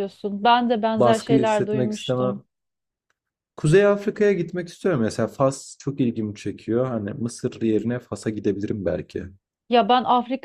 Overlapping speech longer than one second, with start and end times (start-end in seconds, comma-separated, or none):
0.9-2.4